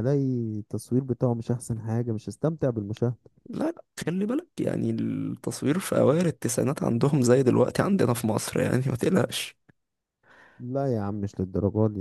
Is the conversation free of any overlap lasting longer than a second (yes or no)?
yes